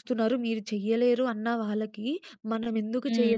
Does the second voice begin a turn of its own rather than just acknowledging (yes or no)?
no